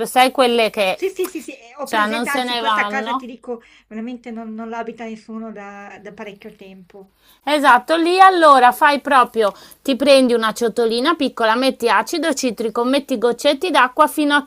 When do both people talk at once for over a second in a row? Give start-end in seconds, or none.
1.8-3.3